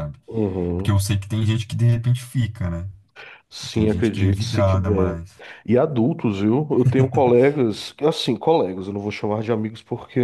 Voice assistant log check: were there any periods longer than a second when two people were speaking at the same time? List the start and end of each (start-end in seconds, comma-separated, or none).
3.5-5.2